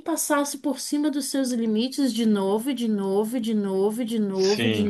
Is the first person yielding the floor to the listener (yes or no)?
no